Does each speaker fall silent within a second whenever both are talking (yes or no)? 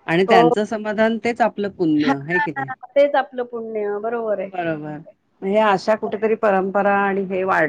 yes